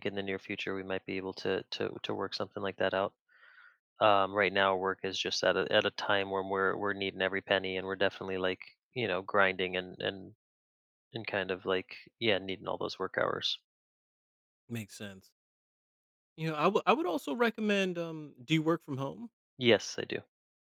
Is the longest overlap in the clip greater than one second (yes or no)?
no